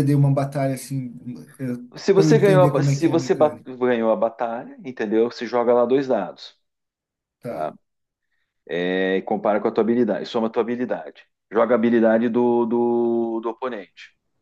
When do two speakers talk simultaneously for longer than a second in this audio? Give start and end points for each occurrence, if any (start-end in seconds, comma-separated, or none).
2.1-3.7